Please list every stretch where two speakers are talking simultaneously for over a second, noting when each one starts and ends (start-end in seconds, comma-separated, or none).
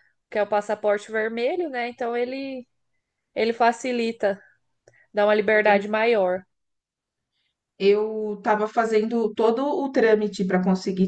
none